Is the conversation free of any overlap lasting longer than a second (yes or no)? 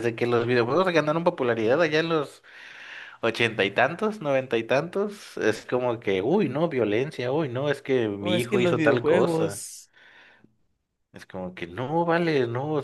no